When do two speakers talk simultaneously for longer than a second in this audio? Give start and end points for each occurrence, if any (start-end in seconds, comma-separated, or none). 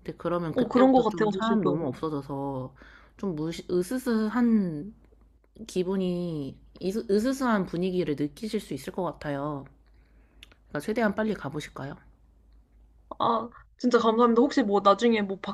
0.5-2.0